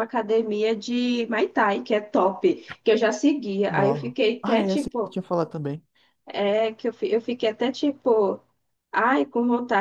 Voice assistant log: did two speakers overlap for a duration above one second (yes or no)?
yes